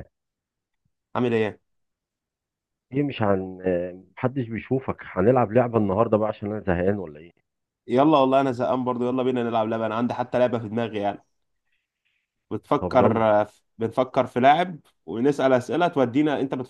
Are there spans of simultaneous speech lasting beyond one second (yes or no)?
no